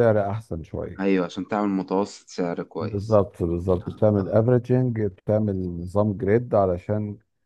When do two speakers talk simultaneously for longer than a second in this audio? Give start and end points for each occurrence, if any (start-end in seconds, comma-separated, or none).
none